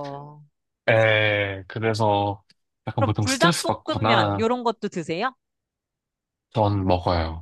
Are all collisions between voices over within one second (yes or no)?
no